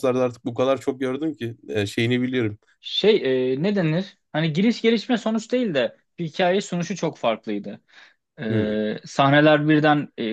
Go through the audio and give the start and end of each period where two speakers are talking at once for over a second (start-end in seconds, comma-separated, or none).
none